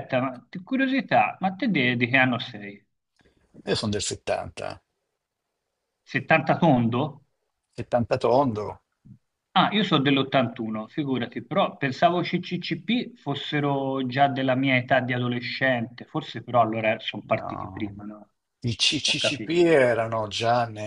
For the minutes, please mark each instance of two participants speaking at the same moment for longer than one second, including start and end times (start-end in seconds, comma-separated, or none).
none